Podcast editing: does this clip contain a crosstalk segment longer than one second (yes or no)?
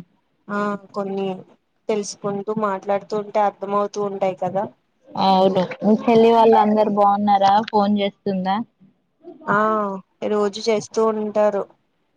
no